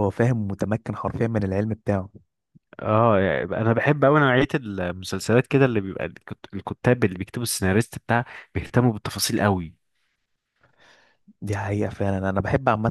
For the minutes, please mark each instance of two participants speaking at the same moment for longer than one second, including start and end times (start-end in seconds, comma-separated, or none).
none